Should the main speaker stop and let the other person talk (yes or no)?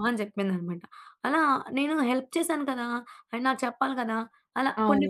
yes